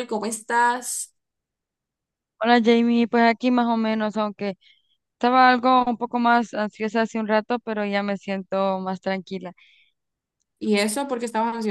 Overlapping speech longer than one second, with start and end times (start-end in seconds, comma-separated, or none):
none